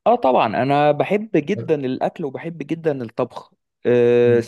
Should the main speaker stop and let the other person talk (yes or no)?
no